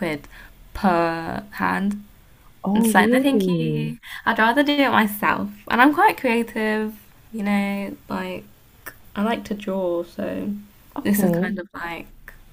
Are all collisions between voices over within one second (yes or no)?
no